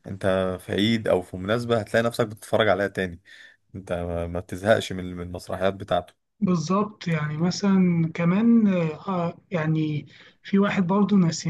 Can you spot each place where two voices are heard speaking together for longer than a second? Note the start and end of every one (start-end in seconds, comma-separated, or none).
none